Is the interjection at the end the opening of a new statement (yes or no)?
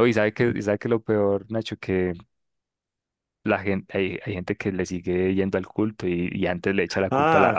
yes